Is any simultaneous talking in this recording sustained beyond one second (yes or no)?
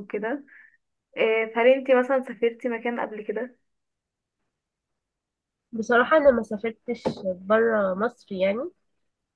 no